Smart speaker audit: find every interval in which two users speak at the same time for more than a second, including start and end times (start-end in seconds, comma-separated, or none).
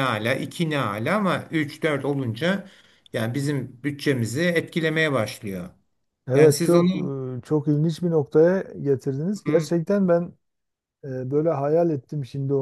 none